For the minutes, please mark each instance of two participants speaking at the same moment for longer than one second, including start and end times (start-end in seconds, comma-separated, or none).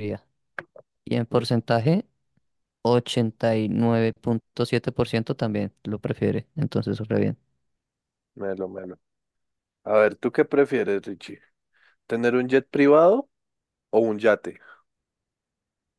none